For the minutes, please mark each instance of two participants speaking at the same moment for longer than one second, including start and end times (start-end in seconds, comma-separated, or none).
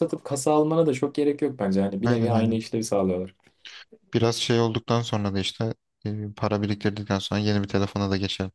none